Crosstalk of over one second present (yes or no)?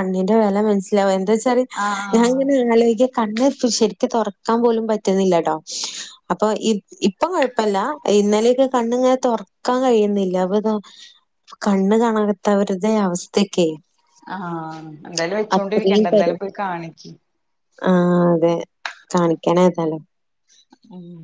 no